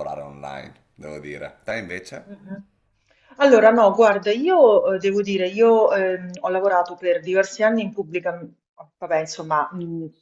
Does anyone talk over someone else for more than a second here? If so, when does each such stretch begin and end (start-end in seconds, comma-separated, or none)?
none